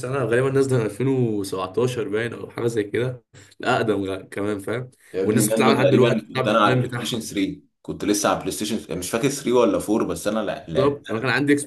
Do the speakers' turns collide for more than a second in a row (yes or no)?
yes